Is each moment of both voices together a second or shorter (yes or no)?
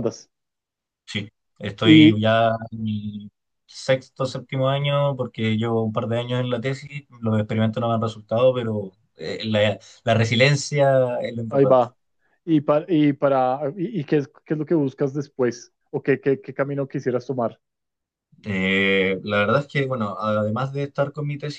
yes